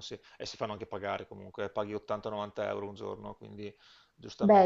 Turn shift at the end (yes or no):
yes